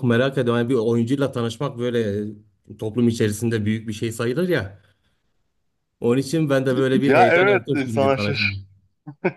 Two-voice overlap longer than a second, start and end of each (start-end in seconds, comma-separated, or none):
7.1-8.7